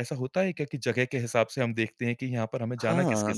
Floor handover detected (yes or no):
yes